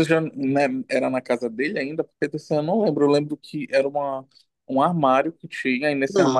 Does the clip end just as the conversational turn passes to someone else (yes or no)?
no